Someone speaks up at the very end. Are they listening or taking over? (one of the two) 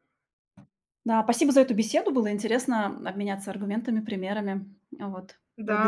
taking over